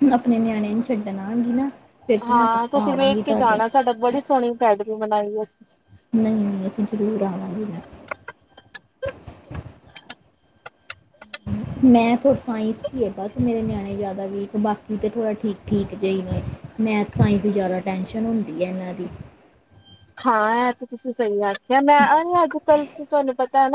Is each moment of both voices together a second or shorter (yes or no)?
yes